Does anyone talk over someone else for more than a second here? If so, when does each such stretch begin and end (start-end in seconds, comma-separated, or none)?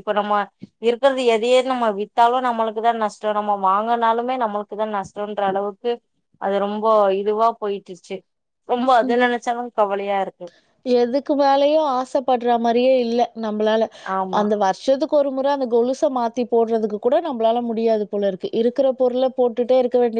none